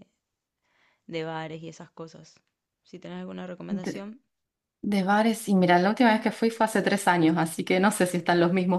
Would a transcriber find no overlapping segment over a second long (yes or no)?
yes